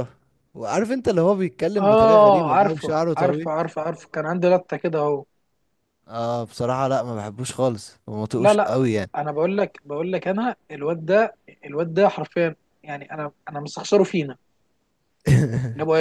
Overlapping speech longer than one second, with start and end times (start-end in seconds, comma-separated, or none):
1.8-3.5